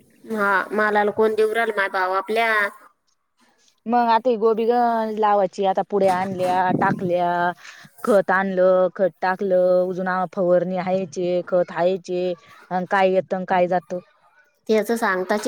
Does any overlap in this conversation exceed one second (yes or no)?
no